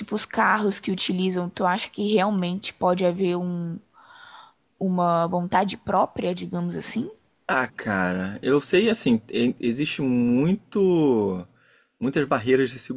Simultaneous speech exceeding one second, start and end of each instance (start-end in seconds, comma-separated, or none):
none